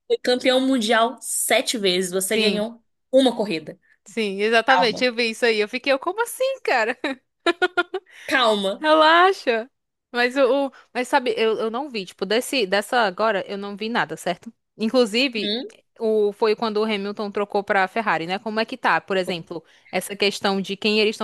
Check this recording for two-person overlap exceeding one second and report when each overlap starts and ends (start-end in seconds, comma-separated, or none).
none